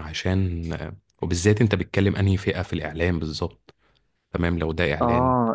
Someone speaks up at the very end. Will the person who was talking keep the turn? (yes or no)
no